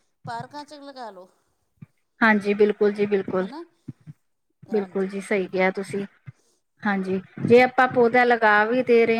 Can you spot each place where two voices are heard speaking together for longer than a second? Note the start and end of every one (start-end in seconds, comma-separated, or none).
none